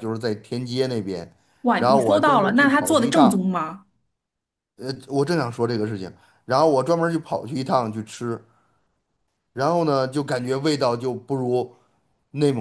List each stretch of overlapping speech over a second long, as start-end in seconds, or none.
1.8-3.3